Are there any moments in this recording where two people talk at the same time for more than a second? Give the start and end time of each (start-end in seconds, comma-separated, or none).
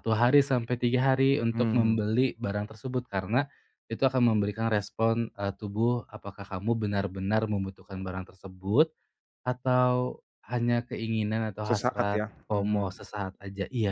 11.7-13.1